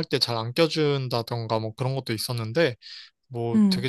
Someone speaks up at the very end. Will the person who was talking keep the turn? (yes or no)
yes